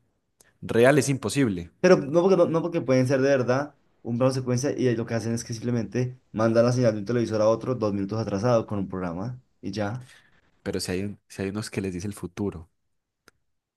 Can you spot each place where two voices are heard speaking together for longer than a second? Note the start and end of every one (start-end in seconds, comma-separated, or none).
none